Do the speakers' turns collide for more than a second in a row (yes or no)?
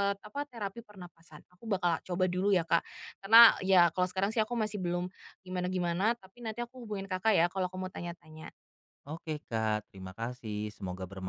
no